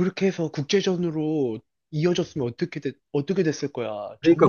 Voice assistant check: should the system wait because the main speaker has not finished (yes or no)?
no